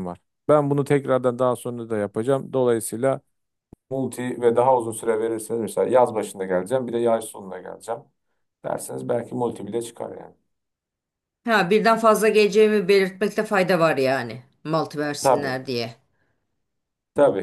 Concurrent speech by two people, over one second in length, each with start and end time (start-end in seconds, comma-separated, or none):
none